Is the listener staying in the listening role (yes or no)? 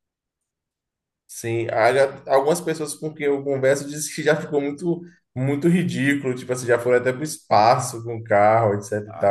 no